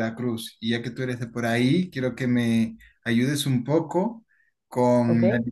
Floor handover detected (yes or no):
no